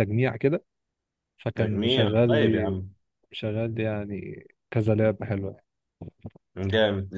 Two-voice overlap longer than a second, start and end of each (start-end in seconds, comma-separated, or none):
1.6-2.8